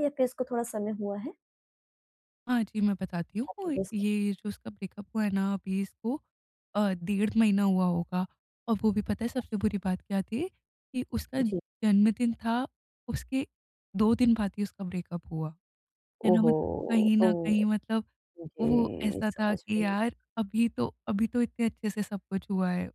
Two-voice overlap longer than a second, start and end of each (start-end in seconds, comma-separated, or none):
18.6-20.0